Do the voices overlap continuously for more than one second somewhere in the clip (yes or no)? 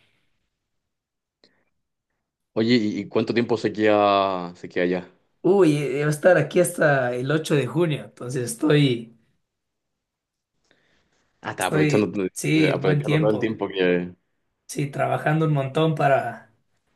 yes